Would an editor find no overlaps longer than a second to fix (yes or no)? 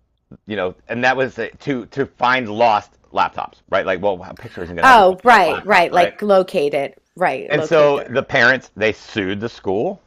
no